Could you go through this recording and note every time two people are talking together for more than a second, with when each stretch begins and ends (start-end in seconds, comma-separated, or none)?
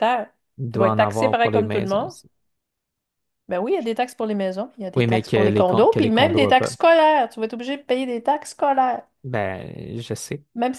0.7-2.1, 5.0-6.7